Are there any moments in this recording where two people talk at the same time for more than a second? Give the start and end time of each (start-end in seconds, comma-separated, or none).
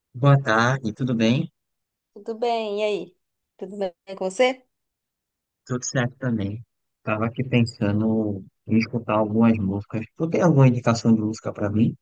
none